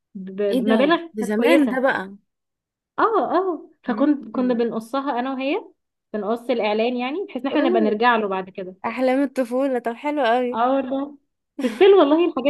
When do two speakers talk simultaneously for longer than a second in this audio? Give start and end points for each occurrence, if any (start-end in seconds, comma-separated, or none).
0.5-1.8